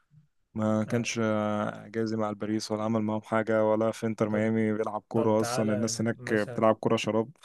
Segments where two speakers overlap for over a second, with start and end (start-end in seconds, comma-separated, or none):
5.1-6.7